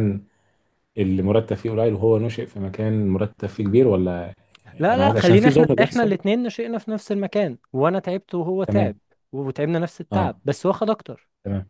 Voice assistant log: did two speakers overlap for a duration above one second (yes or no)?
yes